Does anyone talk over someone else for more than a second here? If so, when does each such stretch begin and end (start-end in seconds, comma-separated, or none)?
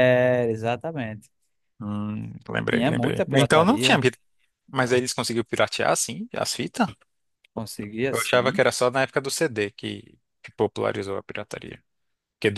2.7-4.0